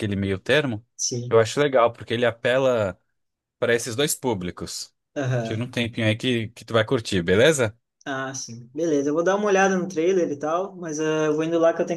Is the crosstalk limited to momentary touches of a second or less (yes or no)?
yes